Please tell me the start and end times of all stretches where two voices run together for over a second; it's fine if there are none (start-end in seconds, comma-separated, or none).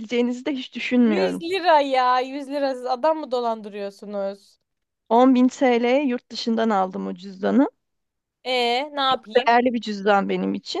none